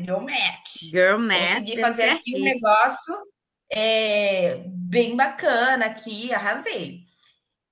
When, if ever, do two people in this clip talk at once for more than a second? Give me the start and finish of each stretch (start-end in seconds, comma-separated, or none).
1.3-2.7